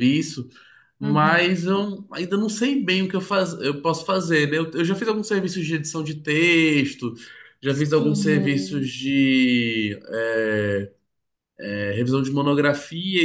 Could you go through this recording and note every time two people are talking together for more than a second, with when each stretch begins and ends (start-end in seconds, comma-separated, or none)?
7.7-8.9